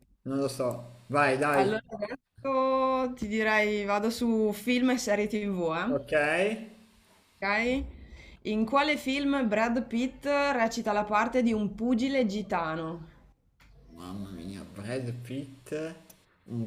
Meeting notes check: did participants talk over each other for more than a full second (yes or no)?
no